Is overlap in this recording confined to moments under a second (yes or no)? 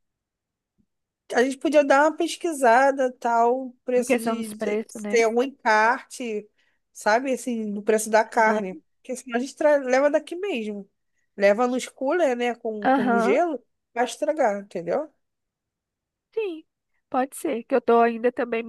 no